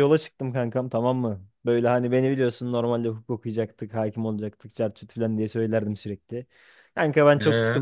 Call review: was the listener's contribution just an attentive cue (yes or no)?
yes